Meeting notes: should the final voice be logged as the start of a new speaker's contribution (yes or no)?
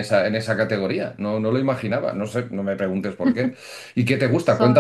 no